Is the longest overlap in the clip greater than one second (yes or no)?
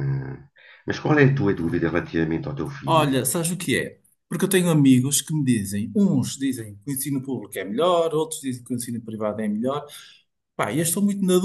no